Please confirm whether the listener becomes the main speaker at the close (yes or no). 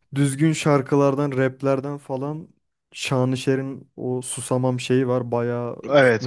yes